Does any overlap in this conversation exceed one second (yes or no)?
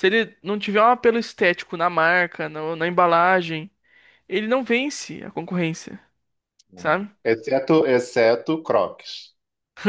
no